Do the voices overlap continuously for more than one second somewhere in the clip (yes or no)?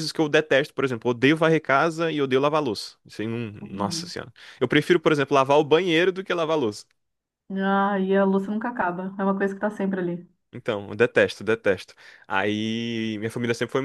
no